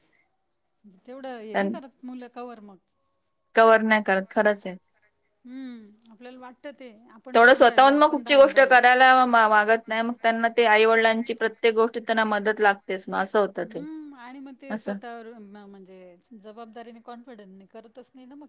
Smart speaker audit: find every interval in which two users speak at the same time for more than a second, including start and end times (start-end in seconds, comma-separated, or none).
none